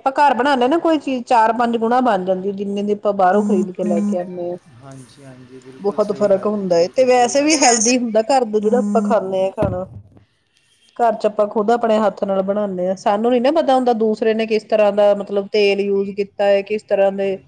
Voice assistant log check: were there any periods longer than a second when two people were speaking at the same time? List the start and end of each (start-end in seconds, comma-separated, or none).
5.8-7.8